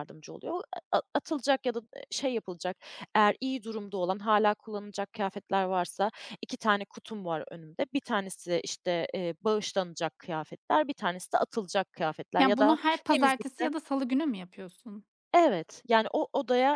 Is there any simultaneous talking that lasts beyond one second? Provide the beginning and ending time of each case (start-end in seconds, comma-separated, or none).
12.4-13.7